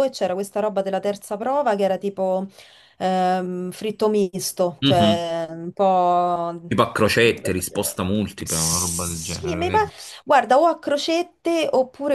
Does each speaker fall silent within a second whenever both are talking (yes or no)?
no